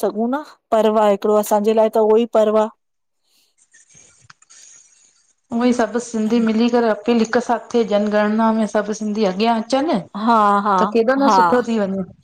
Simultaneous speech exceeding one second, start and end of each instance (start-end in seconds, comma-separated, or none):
none